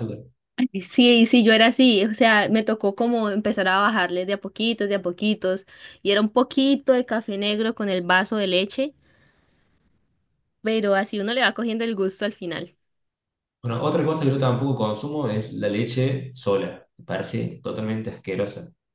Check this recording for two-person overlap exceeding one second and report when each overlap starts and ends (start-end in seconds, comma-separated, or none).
none